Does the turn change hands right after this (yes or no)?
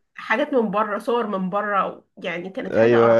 yes